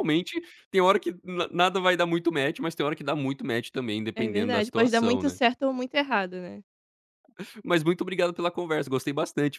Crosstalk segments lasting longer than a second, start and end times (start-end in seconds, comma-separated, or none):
4.1-5.4